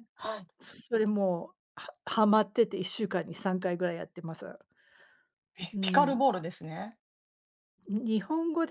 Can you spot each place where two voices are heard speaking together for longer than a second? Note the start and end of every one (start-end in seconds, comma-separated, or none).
none